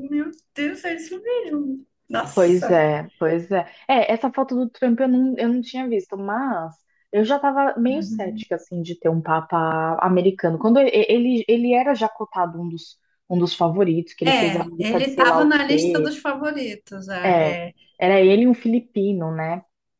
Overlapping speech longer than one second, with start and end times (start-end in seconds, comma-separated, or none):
14.2-16.2